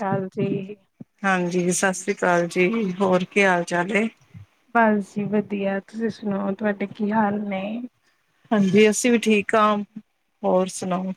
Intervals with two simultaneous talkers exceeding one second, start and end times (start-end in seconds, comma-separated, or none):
none